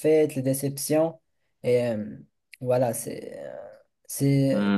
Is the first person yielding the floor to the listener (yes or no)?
yes